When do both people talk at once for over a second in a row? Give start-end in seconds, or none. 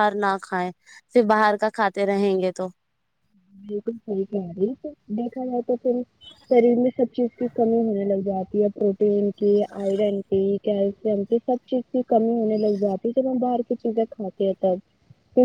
none